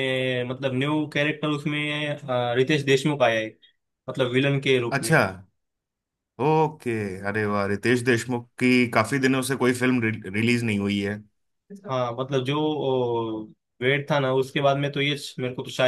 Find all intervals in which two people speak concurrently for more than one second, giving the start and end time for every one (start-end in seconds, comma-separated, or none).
none